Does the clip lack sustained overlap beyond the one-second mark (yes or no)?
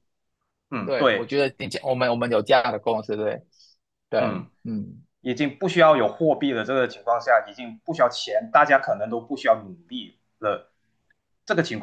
yes